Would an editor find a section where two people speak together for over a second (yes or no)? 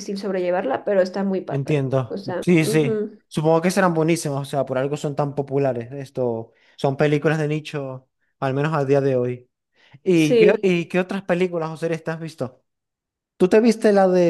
yes